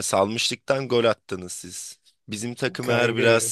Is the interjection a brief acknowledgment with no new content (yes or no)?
yes